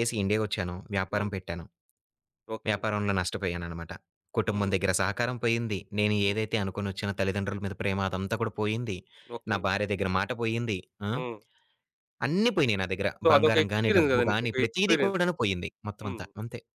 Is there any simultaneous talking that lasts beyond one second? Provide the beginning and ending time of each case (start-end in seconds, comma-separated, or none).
13.2-15.2